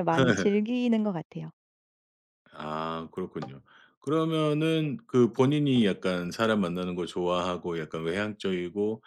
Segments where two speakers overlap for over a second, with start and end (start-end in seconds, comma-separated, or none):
none